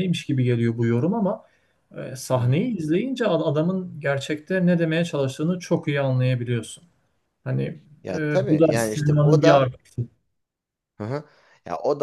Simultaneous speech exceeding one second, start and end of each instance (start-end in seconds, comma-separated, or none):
8.1-9.7